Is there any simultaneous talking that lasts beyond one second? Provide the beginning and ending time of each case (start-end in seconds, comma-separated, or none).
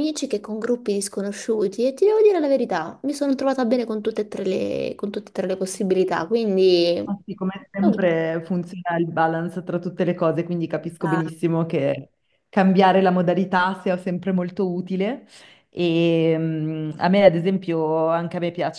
none